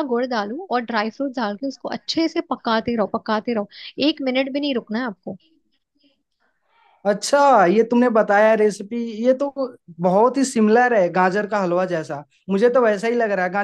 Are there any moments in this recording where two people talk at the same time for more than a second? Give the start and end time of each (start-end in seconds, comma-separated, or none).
none